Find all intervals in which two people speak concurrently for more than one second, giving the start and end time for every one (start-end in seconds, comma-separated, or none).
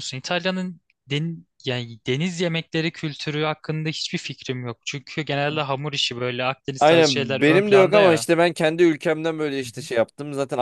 6.8-8.3